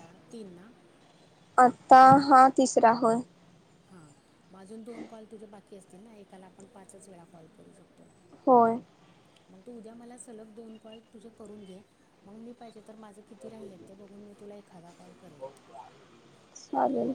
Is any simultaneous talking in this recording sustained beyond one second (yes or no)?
no